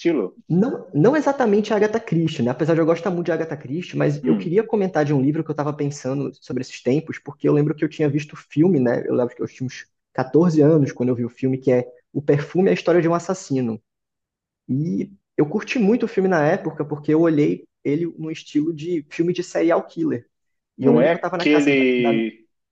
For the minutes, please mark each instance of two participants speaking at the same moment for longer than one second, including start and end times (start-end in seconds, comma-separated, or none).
20.8-22.2